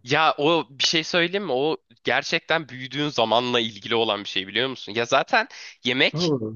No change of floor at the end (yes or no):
yes